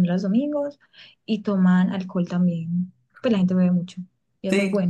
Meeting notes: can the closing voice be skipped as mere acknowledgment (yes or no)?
no